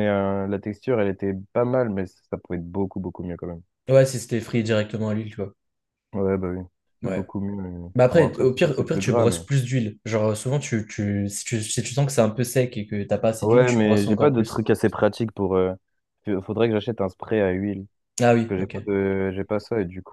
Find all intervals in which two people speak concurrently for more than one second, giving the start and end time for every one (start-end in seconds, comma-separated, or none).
8.0-9.5, 13.4-14.7